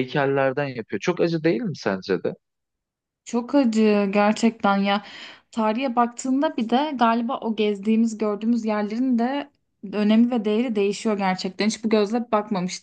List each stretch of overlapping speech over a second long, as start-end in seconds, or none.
none